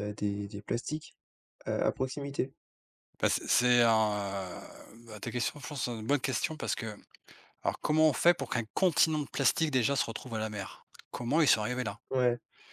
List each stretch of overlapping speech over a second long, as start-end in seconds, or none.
none